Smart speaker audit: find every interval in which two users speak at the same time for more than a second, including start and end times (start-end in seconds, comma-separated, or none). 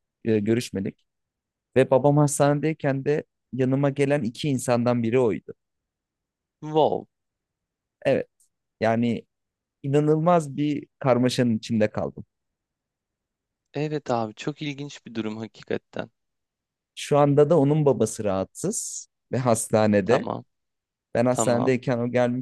none